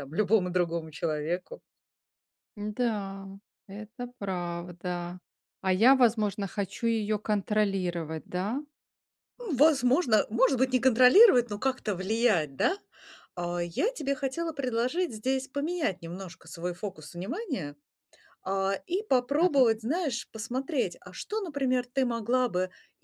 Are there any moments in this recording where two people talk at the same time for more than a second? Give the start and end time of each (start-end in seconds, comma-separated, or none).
none